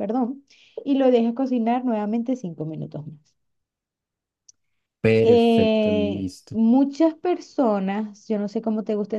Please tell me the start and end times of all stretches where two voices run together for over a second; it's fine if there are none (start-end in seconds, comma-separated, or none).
5.2-6.6